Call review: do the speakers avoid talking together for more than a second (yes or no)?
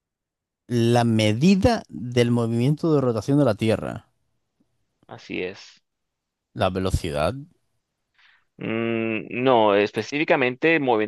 yes